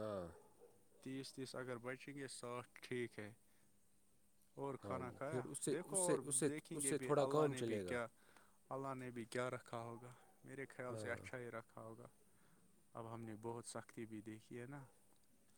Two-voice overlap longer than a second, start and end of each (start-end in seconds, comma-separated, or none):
4.8-8.0